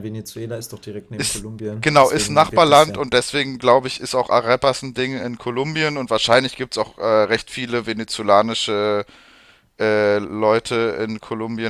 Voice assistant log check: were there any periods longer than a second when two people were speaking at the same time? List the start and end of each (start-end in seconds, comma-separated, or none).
1.2-3.0